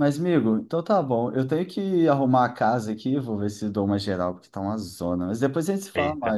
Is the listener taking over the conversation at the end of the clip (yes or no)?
yes